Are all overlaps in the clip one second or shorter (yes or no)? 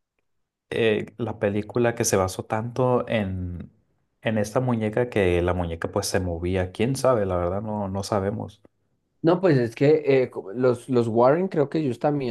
yes